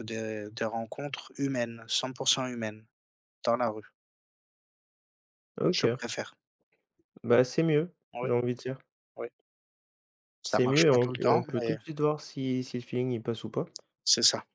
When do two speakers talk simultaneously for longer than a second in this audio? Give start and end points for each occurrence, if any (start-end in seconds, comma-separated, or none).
10.5-11.8